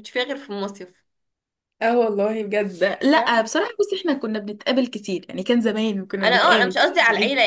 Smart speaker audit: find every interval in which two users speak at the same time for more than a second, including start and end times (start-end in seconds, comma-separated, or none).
none